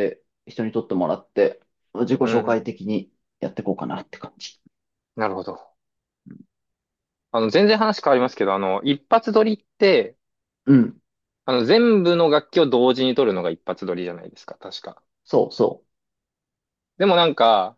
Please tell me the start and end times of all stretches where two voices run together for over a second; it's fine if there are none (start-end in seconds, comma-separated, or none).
none